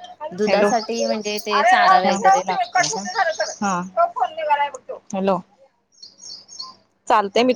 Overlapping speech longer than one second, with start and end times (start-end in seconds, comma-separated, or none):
0.7-3.0